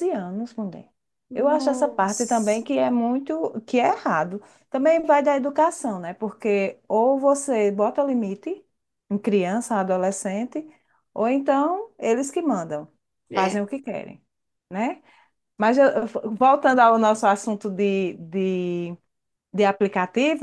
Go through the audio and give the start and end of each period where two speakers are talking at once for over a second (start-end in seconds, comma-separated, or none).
1.3-2.6